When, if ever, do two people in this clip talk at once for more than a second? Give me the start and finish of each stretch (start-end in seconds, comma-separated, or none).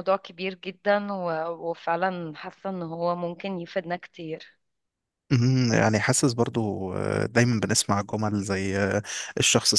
none